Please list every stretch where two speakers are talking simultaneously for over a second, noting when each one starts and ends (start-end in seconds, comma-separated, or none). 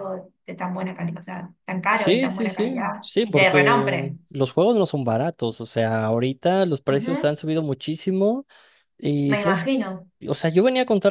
1.9-4.2